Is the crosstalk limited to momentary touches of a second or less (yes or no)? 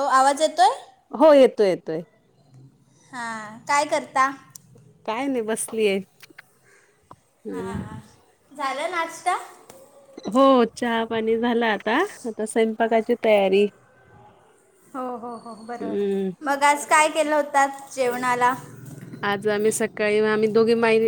yes